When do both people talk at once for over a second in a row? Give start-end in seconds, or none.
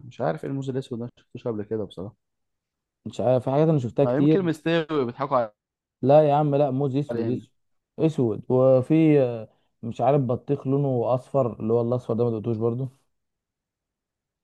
none